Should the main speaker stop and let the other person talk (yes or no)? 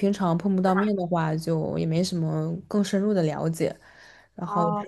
no